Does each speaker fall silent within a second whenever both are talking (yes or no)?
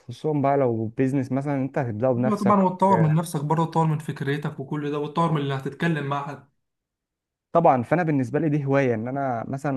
yes